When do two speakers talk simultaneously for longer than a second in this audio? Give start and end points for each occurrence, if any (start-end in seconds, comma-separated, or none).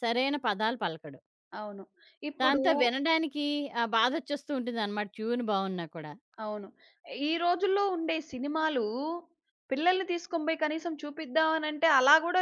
none